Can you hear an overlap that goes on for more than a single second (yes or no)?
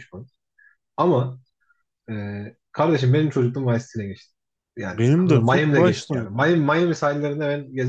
yes